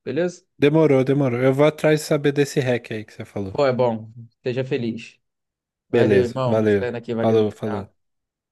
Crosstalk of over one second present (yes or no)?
yes